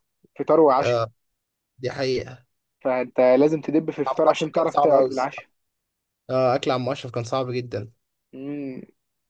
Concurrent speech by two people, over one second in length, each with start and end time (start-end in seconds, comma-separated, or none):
4.1-5.5